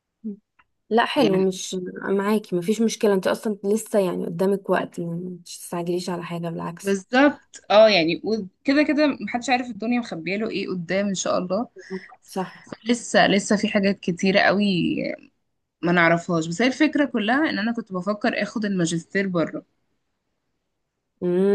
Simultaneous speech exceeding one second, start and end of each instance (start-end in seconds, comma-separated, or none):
none